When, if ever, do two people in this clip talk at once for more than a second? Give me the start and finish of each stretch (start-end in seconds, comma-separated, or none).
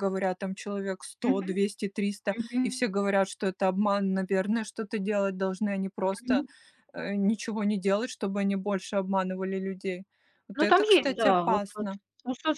10.5-11.9